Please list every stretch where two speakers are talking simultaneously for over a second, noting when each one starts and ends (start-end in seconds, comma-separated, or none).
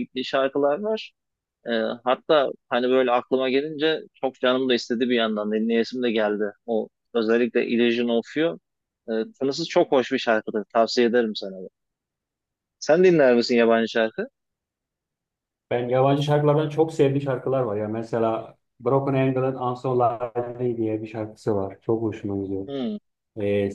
none